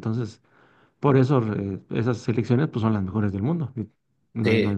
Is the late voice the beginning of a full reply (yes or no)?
yes